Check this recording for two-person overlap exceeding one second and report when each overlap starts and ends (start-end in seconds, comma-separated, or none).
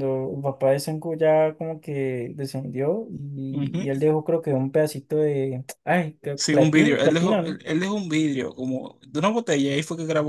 6.3-7.6